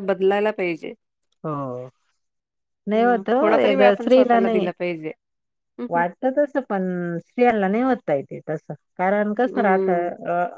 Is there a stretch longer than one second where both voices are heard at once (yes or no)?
yes